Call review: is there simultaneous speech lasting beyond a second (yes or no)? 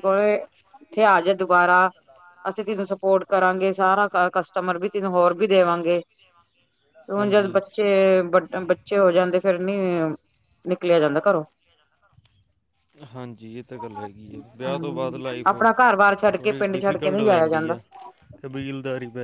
yes